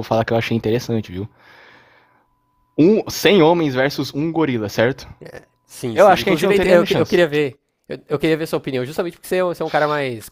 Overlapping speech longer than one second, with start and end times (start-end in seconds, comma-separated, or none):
5.9-7.2